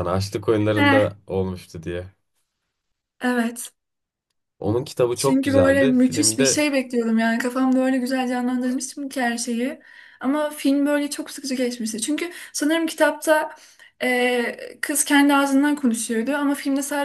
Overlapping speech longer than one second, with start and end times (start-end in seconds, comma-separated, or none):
5.1-6.6